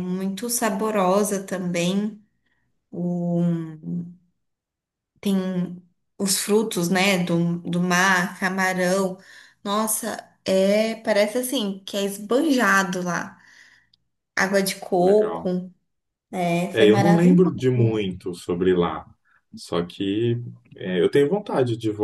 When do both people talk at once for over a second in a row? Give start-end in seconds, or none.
16.7-18.0